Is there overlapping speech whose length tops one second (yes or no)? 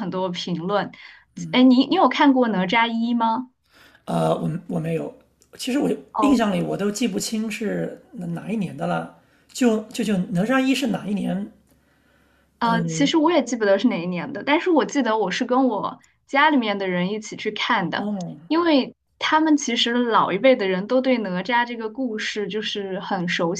no